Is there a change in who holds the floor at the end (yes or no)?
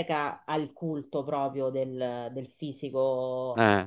no